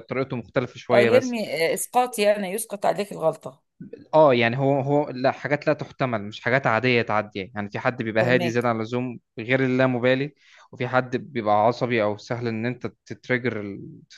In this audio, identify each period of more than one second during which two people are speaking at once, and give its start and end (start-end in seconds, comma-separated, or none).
none